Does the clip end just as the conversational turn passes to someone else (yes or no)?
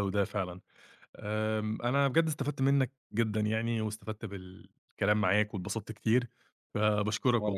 no